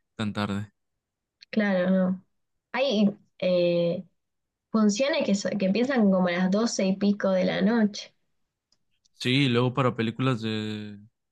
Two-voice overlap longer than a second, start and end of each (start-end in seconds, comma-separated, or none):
none